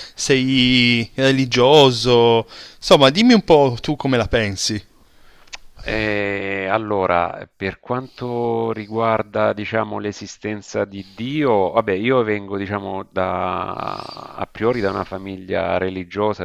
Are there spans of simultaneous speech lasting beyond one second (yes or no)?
no